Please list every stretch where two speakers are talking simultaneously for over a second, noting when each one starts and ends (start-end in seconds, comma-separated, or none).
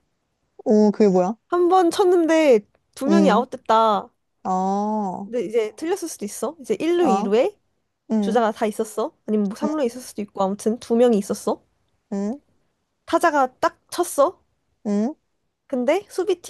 none